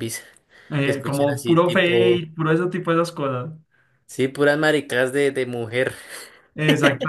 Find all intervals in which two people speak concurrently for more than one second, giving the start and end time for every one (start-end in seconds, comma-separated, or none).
0.8-2.2